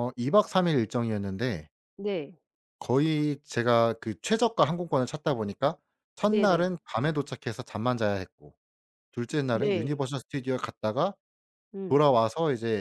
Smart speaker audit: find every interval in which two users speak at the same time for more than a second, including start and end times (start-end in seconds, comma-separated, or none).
none